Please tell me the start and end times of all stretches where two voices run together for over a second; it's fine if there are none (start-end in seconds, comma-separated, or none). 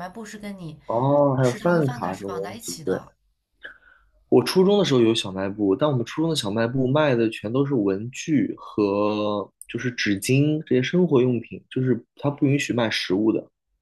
1.4-3.0